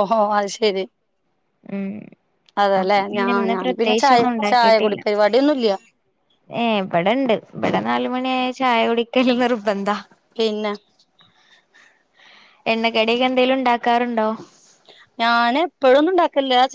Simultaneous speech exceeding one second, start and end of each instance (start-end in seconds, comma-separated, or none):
2.8-5.0